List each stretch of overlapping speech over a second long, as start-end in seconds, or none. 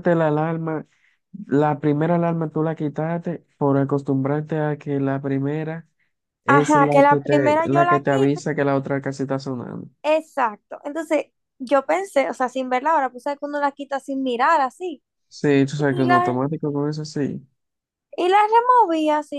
6.5-8.4